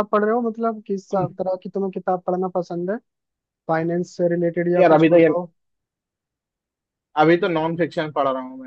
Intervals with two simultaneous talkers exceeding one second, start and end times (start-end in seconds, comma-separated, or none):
none